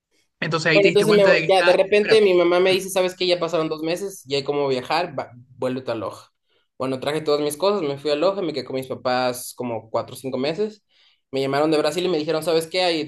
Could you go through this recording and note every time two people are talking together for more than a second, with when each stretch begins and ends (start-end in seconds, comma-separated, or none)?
0.7-2.8